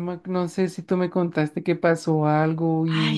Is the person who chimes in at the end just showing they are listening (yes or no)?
no